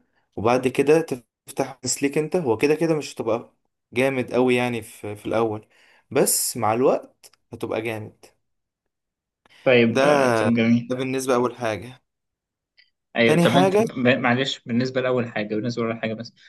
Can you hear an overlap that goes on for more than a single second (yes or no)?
no